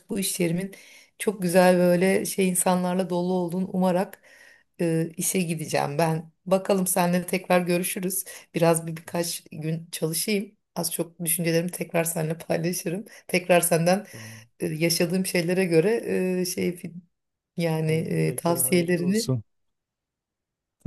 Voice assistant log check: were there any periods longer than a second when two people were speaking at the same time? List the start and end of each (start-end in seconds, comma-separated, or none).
17.9-19.4